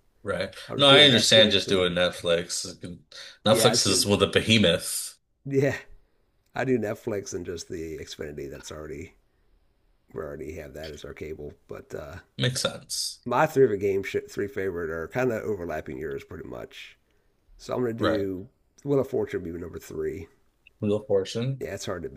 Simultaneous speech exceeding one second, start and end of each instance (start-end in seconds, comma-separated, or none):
0.7-1.9